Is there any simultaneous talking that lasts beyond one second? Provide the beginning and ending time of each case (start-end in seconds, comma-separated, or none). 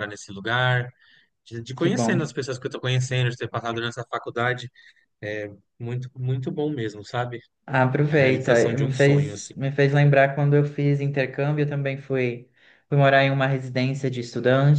8.1-9.5